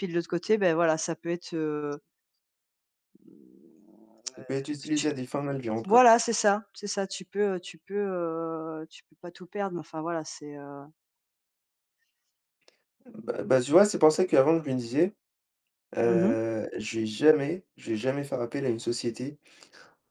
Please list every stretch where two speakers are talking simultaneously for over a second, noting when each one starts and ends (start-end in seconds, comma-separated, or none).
none